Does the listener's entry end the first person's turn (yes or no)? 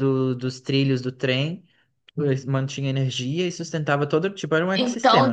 yes